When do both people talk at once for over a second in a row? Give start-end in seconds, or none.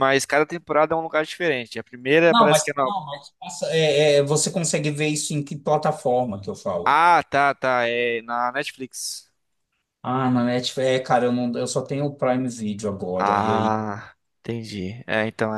none